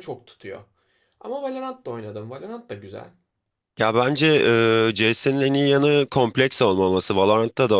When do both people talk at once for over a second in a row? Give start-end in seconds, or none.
none